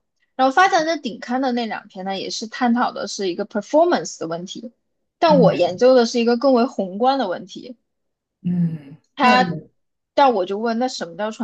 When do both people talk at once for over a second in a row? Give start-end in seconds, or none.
none